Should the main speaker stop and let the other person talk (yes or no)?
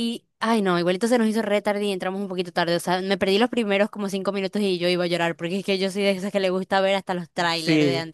yes